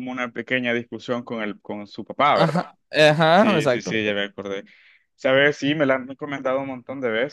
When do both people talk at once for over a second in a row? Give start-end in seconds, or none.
none